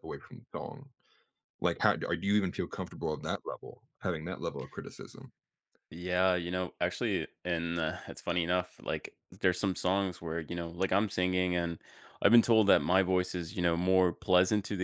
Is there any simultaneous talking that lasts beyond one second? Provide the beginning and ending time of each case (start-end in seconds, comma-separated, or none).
none